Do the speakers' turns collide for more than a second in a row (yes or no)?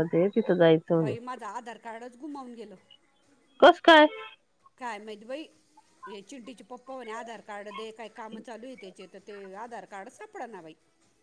no